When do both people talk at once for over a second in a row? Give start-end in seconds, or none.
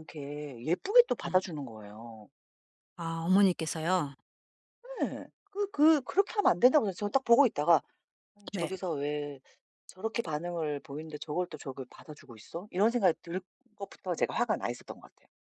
none